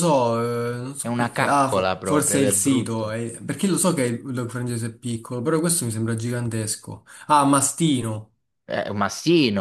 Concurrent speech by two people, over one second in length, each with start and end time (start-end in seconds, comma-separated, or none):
1.0-3.2